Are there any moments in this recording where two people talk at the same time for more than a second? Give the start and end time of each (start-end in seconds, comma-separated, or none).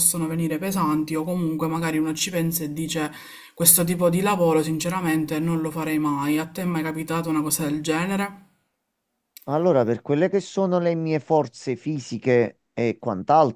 none